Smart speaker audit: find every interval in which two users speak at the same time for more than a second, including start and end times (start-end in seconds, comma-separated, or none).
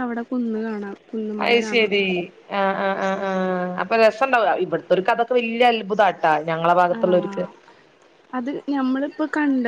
none